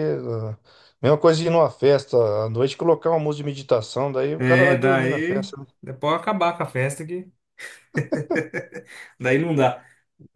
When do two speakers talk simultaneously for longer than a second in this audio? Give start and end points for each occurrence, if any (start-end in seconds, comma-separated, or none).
4.4-5.7